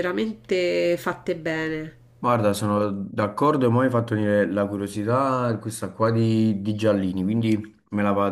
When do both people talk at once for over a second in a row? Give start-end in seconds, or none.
none